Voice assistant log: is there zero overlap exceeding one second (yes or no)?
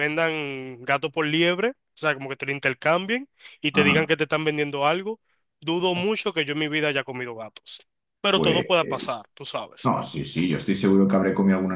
yes